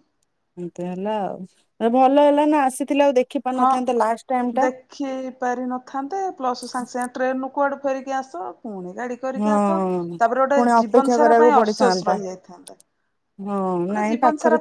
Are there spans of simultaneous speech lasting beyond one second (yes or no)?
yes